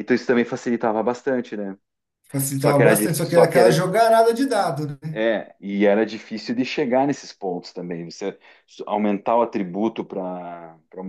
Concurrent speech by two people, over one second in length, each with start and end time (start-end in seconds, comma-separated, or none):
2.5-3.9